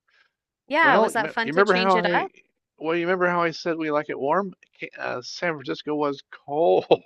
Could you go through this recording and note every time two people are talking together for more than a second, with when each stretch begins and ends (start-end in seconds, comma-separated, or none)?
0.8-2.3